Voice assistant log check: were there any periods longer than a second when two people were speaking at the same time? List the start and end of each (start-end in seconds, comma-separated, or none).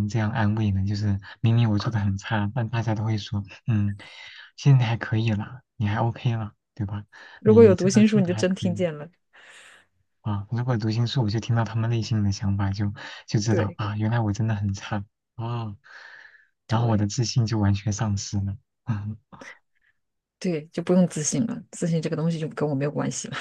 7.4-8.9